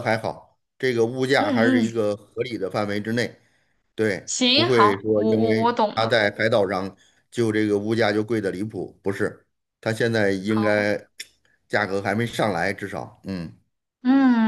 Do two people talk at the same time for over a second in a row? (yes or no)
yes